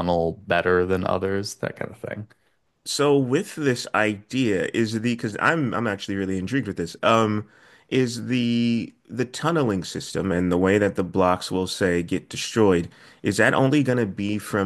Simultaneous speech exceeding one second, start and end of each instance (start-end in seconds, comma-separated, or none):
none